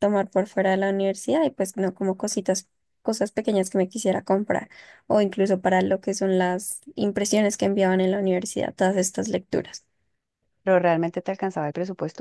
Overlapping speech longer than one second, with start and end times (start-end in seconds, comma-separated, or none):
none